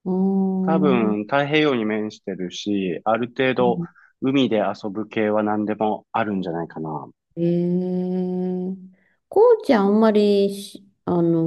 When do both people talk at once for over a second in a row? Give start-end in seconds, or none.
none